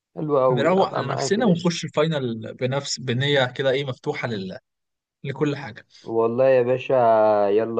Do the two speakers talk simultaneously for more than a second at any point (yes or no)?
yes